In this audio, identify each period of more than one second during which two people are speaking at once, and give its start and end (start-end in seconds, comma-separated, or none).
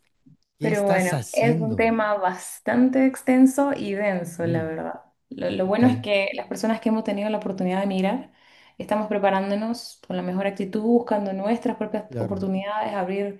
0.6-1.9